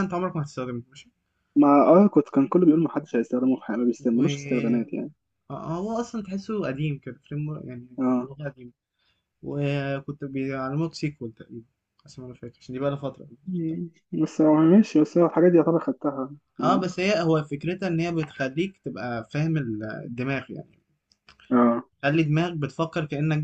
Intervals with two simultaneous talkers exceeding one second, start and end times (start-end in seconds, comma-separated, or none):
none